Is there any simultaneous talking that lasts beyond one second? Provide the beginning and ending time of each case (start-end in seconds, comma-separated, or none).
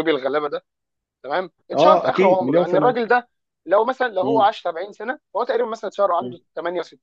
1.7-3.0